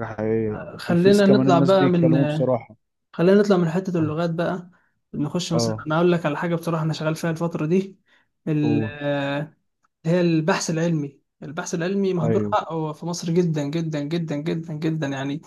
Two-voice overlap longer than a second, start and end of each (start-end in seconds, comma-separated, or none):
0.8-2.1